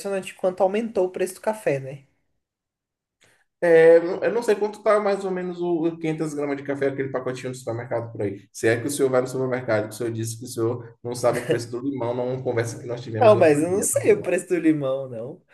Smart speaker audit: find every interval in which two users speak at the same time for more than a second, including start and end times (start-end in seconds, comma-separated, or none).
13.2-14.4